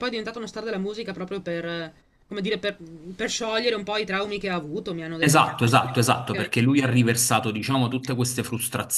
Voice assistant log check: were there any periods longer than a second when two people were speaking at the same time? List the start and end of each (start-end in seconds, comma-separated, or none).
none